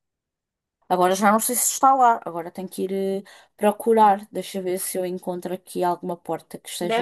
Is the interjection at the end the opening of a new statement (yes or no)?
yes